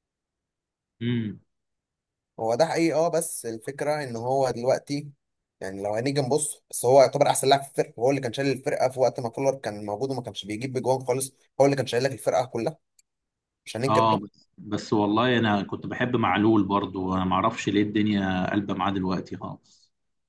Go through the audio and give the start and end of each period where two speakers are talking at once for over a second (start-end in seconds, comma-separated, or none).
none